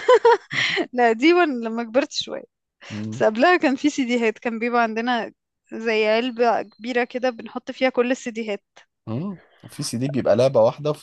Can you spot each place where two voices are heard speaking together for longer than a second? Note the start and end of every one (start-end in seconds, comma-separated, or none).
none